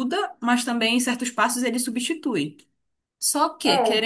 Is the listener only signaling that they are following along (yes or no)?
yes